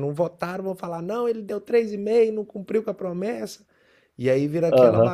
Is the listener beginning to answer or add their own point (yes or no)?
no